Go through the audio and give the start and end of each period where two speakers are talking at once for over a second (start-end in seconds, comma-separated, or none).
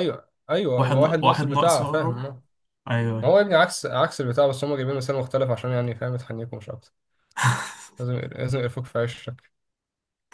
0.8-2.3